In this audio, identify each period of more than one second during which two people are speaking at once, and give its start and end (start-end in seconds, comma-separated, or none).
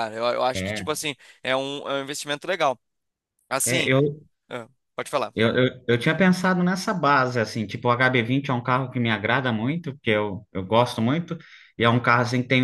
none